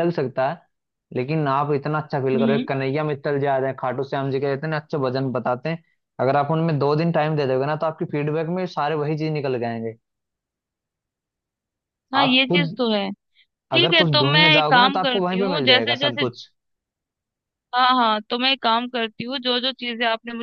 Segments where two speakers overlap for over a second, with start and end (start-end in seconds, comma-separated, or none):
13.8-16.2